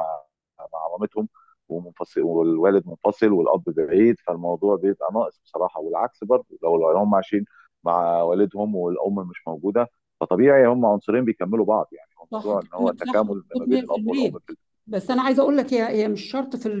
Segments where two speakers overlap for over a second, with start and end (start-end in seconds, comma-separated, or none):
12.3-14.4